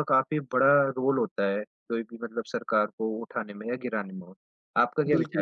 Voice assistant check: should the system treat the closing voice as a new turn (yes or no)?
yes